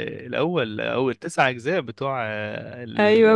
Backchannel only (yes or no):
no